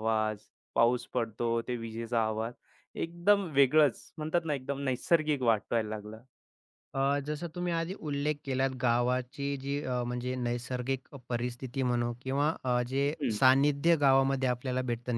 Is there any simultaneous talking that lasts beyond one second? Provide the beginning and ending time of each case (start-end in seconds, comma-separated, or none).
none